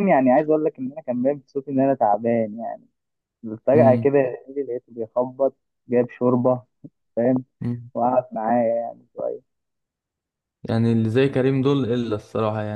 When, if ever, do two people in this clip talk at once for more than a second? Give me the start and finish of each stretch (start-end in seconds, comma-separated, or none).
none